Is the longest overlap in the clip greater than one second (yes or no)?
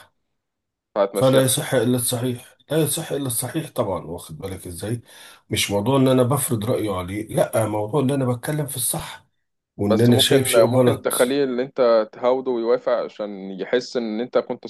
yes